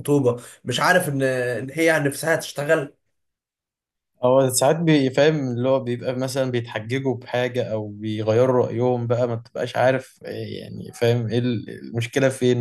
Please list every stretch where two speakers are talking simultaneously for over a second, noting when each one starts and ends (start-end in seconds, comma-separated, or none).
none